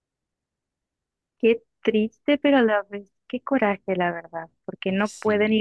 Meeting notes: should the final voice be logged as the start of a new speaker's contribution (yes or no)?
no